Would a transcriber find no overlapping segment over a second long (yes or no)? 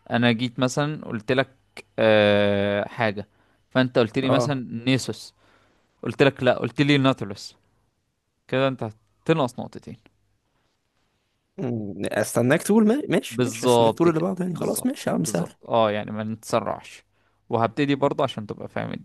no